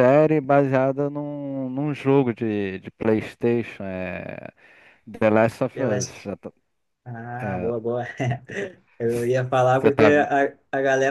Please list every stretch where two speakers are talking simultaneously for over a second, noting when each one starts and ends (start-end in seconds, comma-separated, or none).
none